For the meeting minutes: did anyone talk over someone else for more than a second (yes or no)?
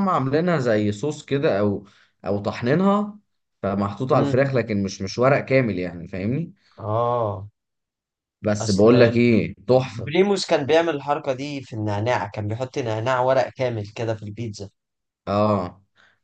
no